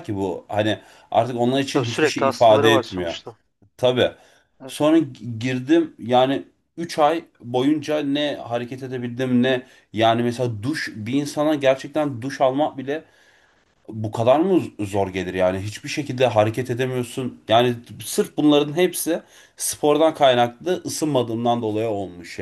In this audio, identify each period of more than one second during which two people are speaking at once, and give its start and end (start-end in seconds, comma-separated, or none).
1.7-3.1